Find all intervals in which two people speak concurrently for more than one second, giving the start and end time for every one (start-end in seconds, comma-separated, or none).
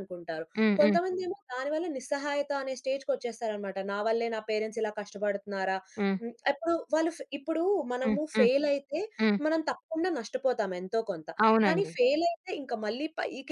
none